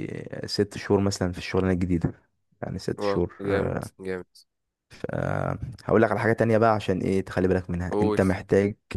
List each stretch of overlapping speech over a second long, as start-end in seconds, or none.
none